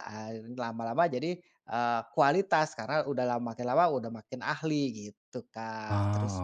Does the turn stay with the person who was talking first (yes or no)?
yes